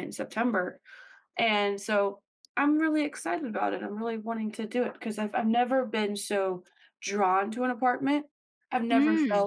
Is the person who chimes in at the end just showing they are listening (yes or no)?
yes